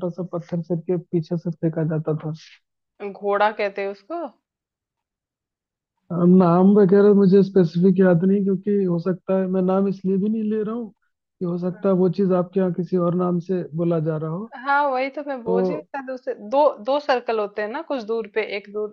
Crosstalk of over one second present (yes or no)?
no